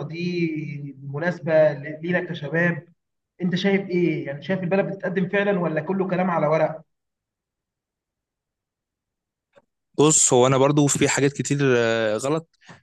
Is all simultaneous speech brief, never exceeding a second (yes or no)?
yes